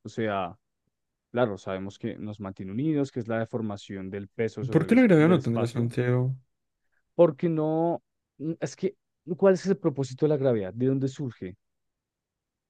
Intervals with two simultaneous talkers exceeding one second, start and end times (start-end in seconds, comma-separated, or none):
4.7-5.9